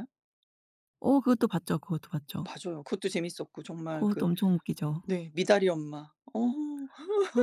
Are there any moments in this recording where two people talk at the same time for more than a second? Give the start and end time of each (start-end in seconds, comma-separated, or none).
none